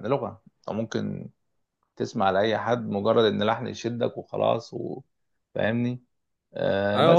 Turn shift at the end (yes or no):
yes